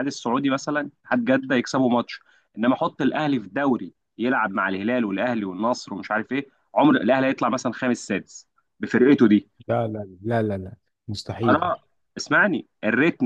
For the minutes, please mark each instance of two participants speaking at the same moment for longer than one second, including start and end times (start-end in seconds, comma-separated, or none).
none